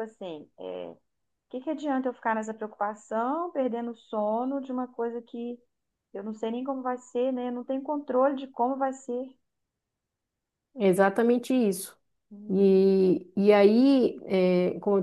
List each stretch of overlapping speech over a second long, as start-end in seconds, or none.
none